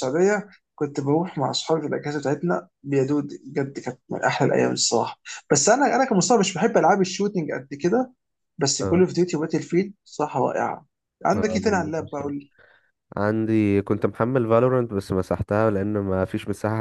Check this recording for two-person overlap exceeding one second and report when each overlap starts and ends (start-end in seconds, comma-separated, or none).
none